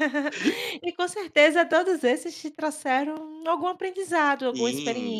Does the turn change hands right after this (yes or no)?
yes